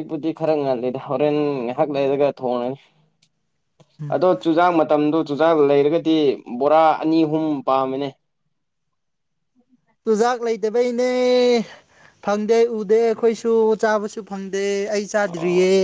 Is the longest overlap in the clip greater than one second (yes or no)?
no